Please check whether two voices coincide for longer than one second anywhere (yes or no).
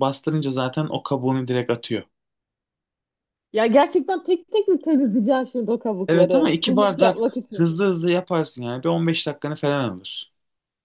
yes